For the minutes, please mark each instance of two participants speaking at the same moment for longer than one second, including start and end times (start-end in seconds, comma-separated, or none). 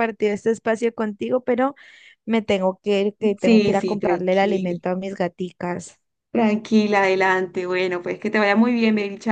3.4-4.8